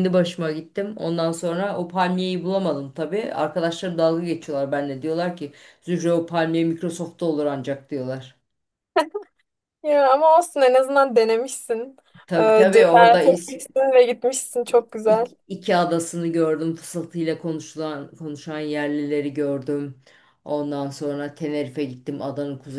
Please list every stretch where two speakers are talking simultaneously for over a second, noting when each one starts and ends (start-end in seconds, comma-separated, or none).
12.4-13.6